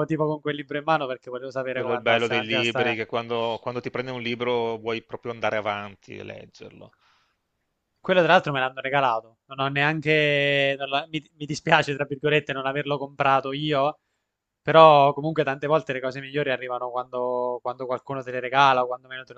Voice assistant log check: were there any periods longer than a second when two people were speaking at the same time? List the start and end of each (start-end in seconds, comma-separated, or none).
1.7-3.0